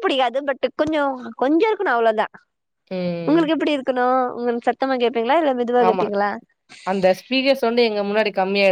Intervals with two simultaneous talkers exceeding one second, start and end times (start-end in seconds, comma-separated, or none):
none